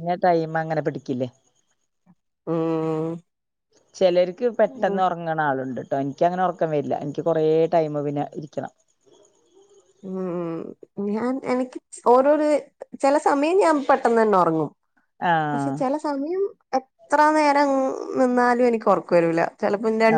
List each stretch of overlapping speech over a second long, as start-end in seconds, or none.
none